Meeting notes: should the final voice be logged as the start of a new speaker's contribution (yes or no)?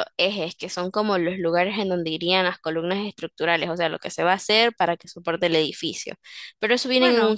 yes